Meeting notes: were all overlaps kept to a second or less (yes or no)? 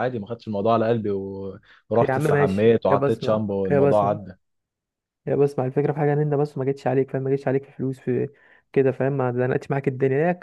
no